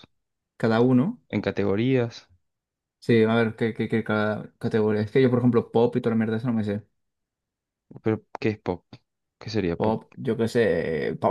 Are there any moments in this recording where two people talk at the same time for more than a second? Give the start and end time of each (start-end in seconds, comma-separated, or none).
none